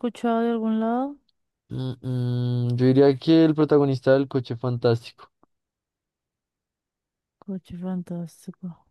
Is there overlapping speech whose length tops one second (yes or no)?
no